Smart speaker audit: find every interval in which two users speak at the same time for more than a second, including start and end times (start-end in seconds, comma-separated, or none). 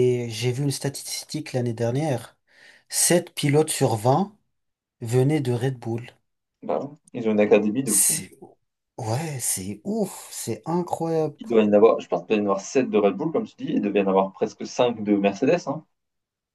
none